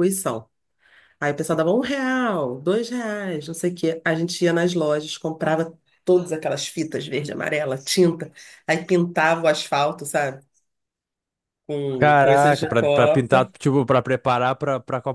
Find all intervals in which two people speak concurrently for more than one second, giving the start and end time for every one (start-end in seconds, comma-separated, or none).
11.9-13.5